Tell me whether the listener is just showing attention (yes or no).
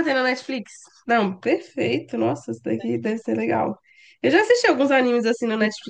yes